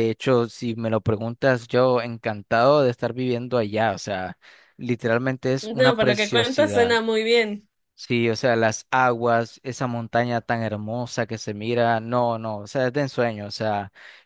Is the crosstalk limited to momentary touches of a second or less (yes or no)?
no